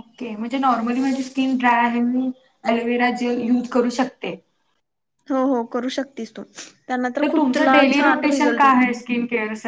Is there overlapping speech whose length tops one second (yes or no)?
yes